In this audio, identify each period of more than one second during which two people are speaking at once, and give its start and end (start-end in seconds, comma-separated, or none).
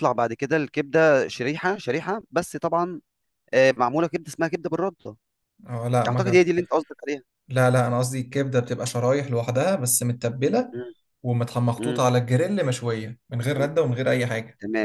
none